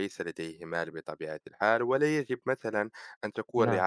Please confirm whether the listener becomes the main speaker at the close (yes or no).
no